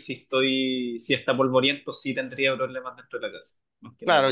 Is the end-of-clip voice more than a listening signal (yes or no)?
yes